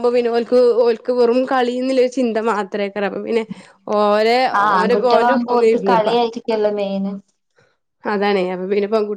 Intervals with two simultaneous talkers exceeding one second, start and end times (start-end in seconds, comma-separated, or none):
4.8-6.1